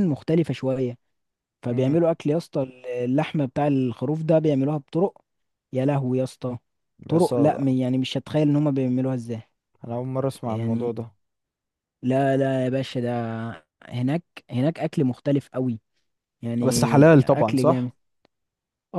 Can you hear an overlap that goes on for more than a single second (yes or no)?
yes